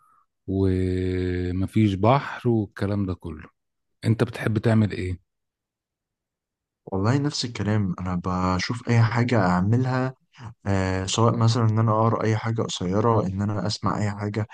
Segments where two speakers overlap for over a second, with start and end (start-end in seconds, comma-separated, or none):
none